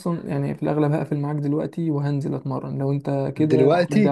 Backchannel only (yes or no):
yes